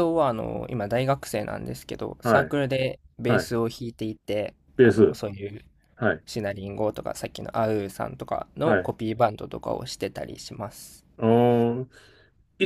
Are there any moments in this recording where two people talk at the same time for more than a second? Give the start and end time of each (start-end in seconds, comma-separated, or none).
none